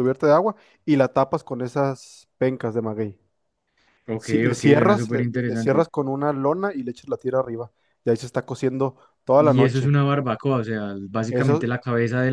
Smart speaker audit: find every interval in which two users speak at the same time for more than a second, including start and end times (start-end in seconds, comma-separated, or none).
4.2-5.8